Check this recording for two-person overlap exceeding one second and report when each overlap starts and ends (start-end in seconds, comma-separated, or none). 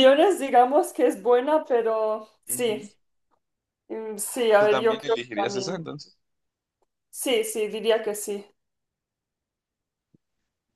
4.6-5.8